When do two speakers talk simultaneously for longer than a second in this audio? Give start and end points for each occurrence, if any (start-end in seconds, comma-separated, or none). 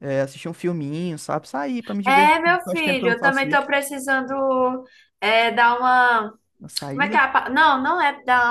2.0-3.6